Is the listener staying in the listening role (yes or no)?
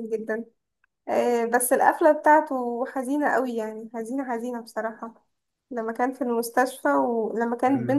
yes